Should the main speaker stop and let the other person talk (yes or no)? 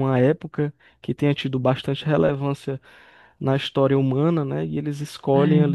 no